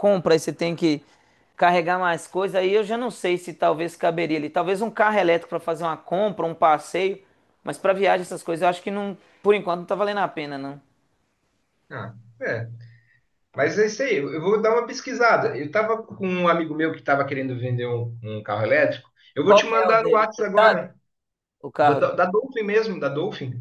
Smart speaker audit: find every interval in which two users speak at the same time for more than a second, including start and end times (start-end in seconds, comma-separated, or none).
19.4-20.9